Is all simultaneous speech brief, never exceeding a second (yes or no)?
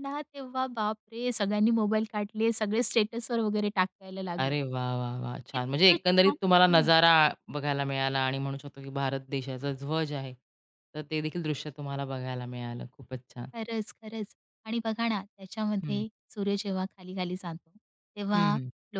no